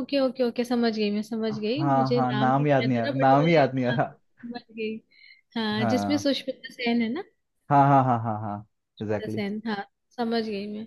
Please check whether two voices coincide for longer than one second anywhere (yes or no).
yes